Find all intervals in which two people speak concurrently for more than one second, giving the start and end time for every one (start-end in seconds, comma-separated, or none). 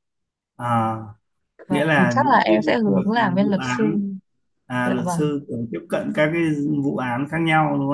1.7-4.0